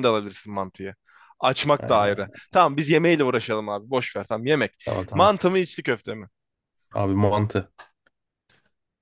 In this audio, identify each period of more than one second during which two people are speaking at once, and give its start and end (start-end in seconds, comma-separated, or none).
none